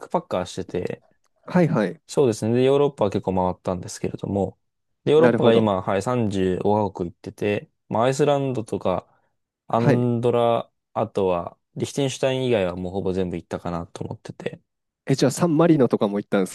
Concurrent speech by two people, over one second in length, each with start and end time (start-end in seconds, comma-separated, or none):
none